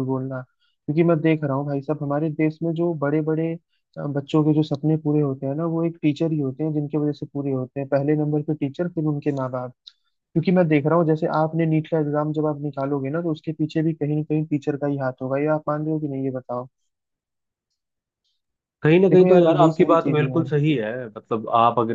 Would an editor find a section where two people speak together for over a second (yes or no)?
yes